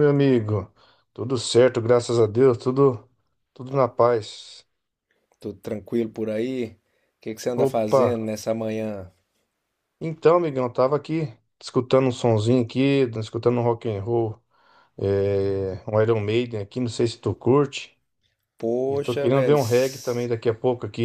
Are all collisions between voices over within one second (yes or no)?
no